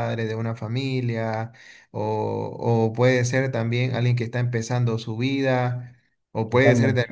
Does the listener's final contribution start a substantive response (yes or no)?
no